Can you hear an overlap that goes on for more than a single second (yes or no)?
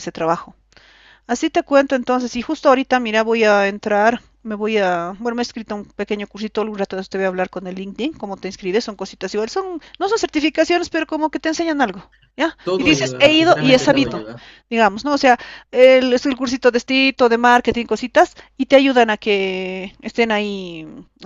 yes